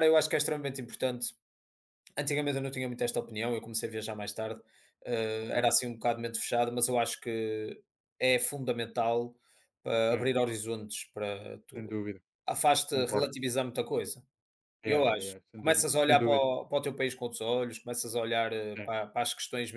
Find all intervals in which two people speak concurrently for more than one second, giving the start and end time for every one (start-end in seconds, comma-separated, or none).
14.8-16.5